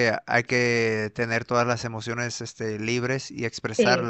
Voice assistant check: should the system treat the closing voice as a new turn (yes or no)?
no